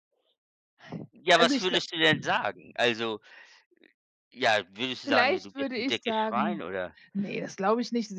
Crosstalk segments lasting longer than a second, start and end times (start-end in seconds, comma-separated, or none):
5.0-6.6